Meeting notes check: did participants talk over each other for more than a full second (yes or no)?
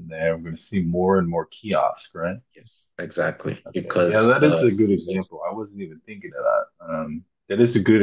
yes